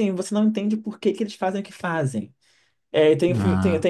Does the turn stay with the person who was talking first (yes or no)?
yes